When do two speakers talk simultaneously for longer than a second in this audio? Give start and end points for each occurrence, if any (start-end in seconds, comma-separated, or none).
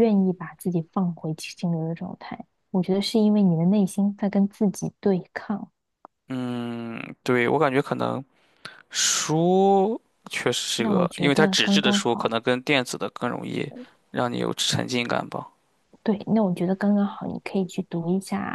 10.8-12.4